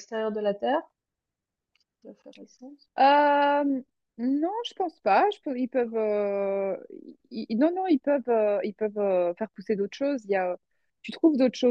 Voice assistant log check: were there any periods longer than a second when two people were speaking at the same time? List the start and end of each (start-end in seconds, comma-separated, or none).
none